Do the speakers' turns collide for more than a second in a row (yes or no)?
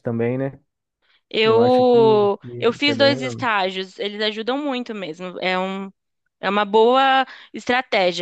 yes